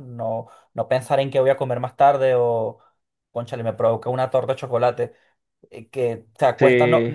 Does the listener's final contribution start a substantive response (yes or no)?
no